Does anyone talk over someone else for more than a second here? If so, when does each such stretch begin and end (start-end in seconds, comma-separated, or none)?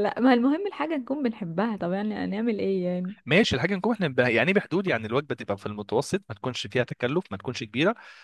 none